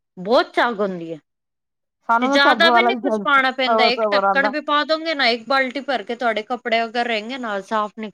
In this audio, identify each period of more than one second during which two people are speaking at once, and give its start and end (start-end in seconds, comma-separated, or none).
2.2-4.5